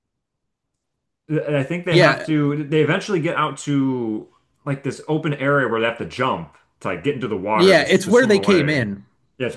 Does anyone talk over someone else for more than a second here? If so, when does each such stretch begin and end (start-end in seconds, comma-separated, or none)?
7.5-8.9